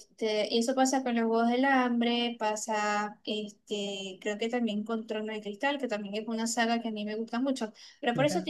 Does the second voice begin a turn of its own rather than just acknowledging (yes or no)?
no